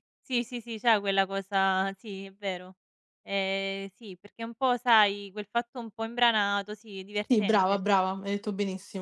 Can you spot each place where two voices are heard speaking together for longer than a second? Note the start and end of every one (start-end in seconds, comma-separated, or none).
none